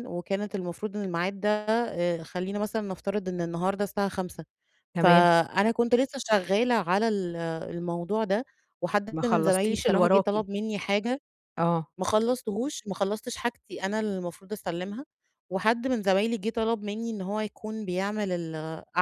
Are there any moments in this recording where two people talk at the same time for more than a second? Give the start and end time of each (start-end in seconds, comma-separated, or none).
9.1-10.3